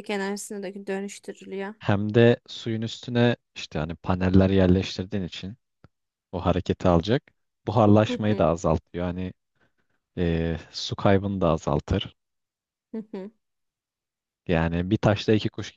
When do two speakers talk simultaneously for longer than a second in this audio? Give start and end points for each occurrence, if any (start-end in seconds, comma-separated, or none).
none